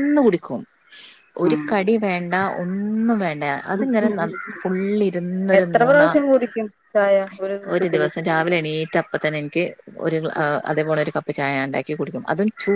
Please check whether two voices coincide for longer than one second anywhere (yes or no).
no